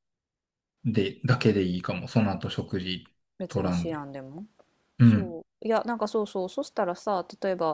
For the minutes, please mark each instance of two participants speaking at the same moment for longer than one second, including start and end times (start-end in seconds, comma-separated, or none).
none